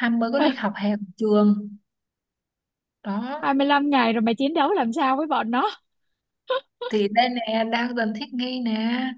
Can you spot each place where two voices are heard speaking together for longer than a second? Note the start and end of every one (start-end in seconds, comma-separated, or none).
none